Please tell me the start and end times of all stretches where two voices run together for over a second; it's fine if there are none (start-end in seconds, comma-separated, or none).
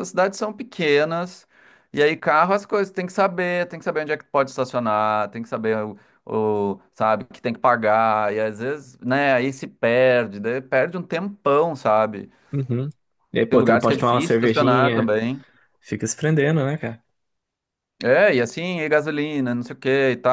13.5-15.2